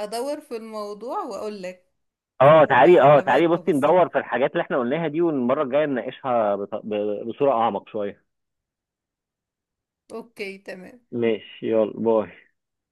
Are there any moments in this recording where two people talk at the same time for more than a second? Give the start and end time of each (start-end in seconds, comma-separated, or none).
2.8-4.0